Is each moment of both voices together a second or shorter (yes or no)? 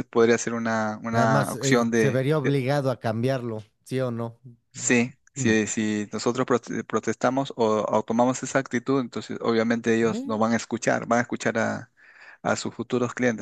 no